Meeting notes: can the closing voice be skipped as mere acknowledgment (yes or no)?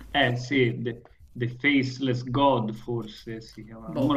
no